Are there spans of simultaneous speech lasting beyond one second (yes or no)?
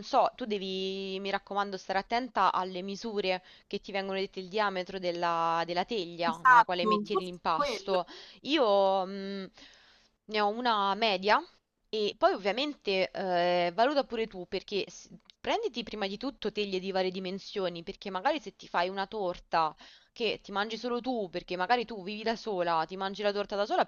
yes